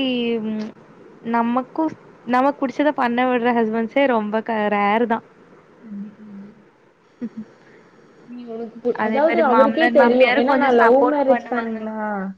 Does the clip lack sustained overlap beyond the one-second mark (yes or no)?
no